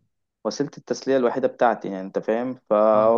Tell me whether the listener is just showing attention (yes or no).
yes